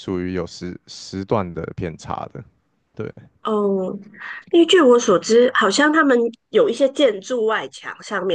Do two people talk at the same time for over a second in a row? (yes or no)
no